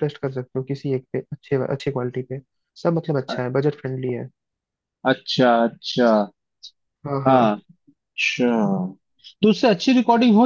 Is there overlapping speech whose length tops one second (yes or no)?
no